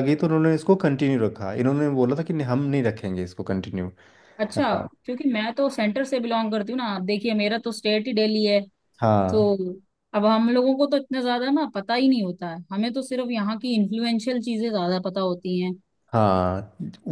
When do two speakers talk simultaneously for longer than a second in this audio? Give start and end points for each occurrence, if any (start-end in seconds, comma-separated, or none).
none